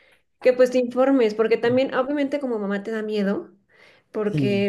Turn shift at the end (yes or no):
no